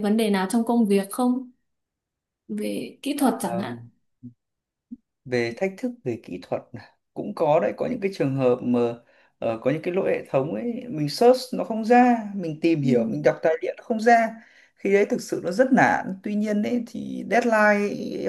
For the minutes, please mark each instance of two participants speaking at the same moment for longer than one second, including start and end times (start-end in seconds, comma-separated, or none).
none